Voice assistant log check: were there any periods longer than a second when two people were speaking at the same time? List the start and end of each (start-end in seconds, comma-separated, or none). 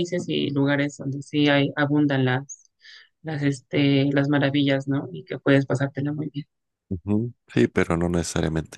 none